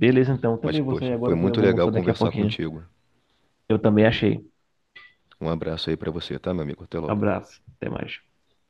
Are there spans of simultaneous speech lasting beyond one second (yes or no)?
yes